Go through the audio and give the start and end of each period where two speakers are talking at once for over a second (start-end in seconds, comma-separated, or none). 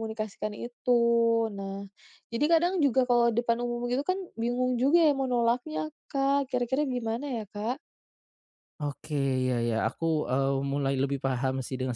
none